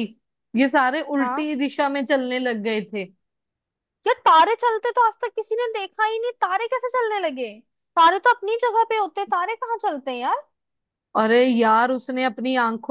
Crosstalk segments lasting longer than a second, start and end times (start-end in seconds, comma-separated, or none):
none